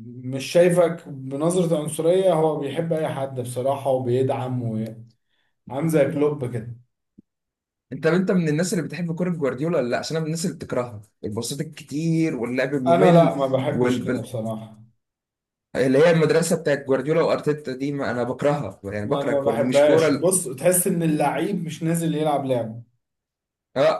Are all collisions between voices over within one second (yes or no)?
no